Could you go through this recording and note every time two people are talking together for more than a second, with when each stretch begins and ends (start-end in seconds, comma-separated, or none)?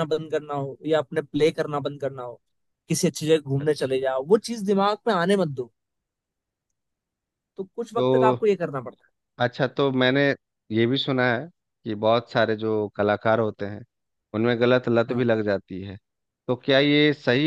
none